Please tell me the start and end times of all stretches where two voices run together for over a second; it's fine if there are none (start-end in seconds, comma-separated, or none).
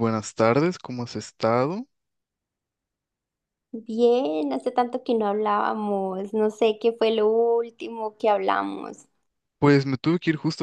none